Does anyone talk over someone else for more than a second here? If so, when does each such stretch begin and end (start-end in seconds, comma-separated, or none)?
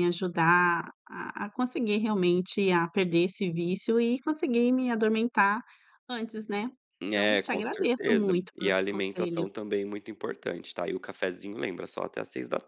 7.1-9.5